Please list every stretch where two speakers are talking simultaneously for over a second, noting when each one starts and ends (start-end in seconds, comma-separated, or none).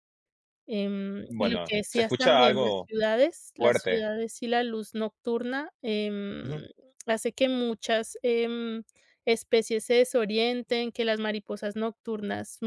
1.3-2.9